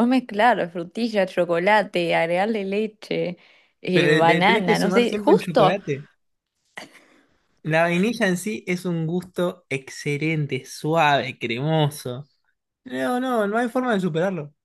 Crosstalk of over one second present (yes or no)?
yes